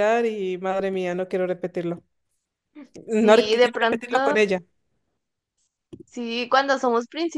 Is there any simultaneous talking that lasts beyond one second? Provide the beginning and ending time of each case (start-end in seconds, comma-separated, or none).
3.1-4.4